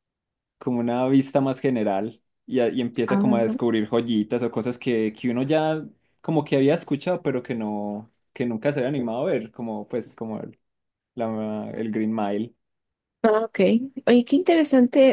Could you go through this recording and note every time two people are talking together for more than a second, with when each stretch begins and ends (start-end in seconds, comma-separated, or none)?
none